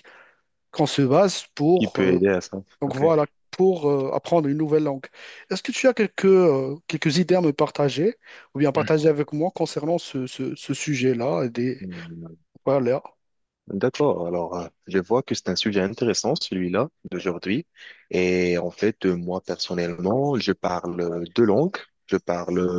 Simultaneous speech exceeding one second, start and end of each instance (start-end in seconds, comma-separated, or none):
none